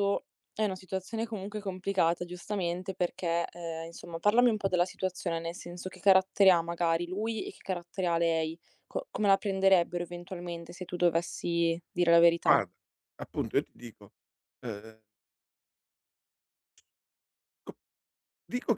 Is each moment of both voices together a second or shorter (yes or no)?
yes